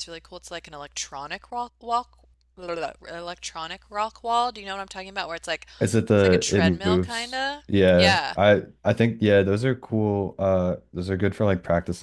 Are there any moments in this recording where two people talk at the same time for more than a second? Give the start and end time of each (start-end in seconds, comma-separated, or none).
6.1-8.3